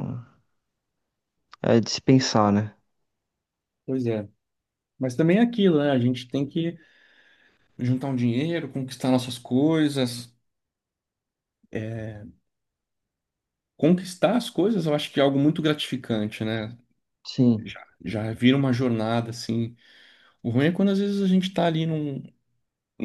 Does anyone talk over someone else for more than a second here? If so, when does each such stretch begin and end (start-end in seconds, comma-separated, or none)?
none